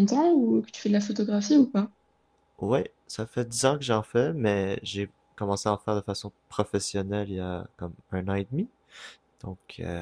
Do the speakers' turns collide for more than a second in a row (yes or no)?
no